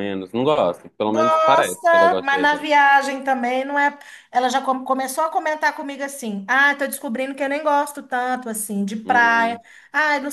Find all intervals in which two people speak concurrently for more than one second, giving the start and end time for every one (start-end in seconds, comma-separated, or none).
1.1-2.7